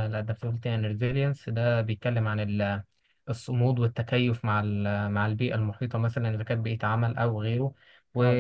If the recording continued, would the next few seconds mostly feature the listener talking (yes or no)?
no